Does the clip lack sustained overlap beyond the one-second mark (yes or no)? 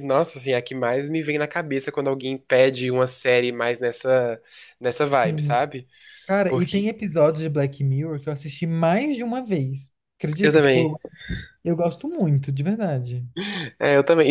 yes